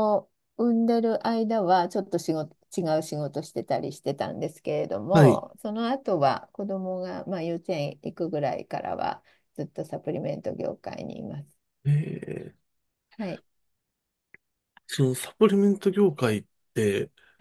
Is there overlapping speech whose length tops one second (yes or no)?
no